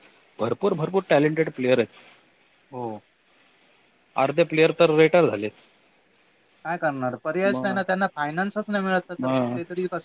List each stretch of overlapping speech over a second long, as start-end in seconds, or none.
none